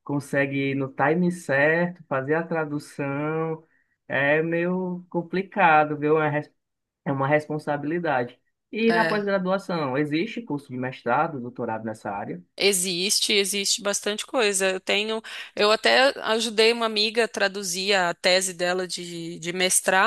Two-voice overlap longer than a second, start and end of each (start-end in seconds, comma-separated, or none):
none